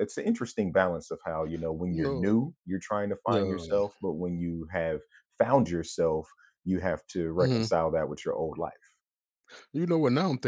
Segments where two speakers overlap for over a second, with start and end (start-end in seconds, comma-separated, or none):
none